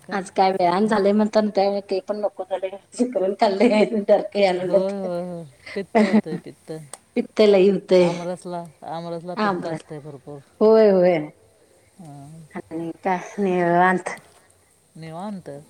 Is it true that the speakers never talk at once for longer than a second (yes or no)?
yes